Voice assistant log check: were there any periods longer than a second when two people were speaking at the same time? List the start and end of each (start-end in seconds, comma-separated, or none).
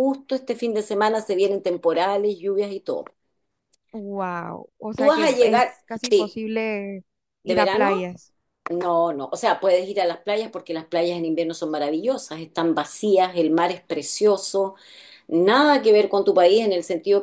4.9-6.4